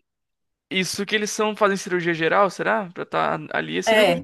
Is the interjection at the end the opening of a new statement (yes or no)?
yes